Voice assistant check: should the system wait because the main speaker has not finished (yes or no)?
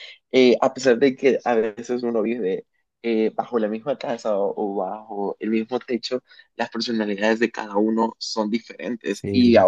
yes